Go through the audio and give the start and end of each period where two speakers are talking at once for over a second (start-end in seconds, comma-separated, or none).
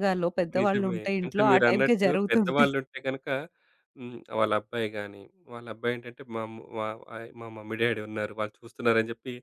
0.6-2.7